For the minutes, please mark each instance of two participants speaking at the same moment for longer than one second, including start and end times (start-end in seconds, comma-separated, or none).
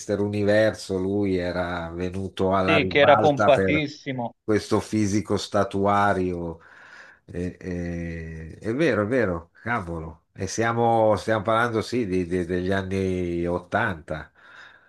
2.6-3.8